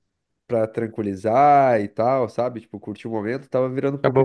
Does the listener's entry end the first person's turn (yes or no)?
yes